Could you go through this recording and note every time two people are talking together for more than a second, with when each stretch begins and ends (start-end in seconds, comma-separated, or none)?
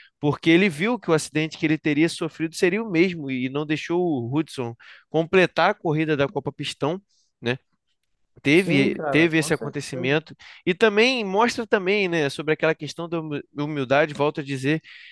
8.5-10.2